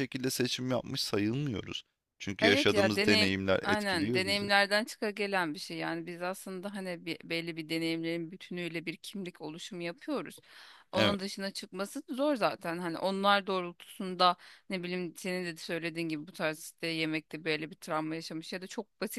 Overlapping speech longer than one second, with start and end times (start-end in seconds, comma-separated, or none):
2.4-4.5